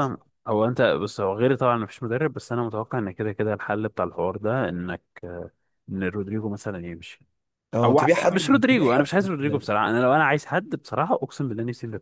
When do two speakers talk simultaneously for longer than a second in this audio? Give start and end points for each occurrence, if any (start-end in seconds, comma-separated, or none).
7.8-9.7